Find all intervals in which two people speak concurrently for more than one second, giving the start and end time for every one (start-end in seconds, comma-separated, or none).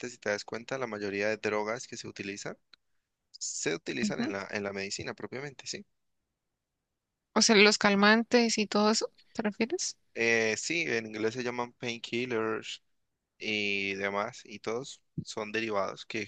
none